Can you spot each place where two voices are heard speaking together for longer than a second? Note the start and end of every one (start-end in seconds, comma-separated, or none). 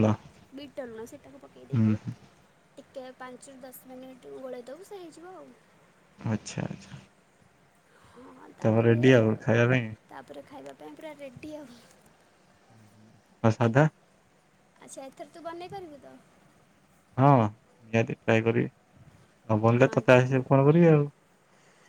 none